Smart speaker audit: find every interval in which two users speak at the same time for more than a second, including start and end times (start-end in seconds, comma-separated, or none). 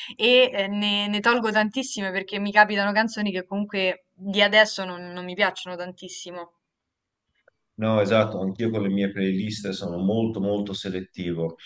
none